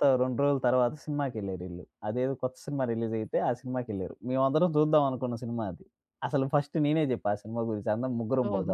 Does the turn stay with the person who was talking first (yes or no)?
no